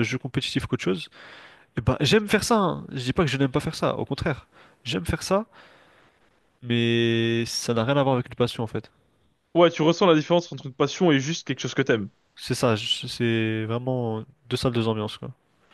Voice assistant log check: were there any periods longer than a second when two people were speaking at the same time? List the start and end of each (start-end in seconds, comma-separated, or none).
none